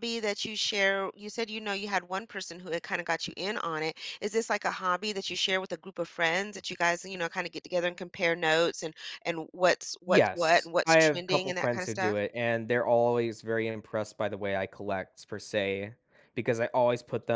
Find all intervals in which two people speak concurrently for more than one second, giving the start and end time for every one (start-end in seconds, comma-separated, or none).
10.1-12.2